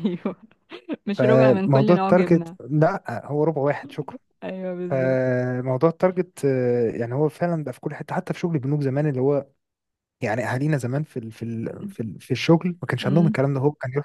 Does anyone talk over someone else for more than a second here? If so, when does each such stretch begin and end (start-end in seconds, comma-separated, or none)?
1.1-2.6